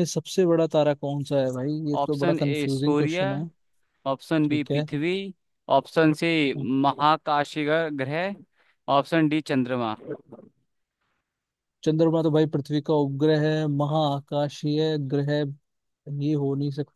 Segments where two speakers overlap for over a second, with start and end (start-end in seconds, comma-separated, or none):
2.0-3.2